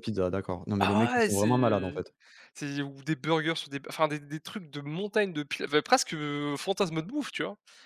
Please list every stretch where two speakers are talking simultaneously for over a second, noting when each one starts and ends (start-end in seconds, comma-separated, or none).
0.8-2.0